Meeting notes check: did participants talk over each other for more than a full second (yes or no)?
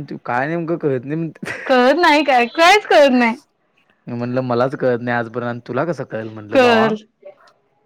no